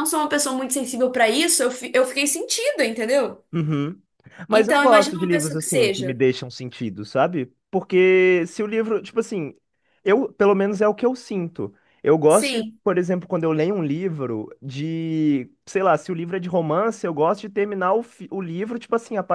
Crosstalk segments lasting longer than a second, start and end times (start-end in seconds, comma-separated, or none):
4.5-6.2